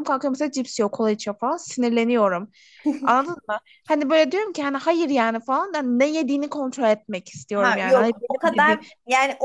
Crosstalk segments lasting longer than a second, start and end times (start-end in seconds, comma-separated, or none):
7.5-8.8